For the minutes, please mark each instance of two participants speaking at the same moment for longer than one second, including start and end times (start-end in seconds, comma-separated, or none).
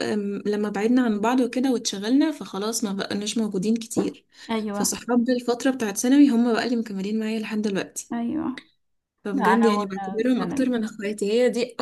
9.3-10.7